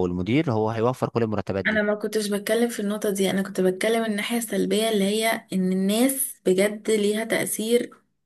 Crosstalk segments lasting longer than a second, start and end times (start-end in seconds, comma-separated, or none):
none